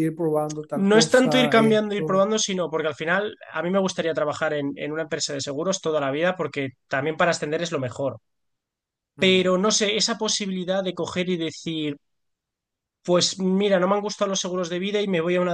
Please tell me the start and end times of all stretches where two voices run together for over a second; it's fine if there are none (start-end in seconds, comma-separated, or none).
0.9-2.3